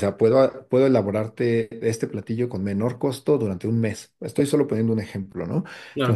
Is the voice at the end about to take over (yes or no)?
no